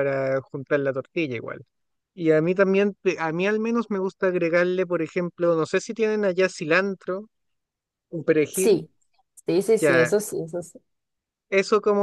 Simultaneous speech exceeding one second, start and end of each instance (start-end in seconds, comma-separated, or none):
none